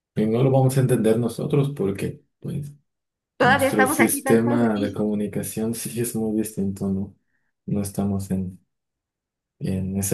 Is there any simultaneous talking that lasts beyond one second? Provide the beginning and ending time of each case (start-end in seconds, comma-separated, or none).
3.4-5.0